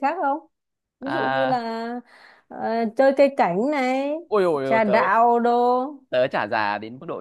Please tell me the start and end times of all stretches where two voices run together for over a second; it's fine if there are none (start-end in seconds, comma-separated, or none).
none